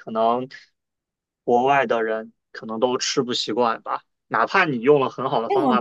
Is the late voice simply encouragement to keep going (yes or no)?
yes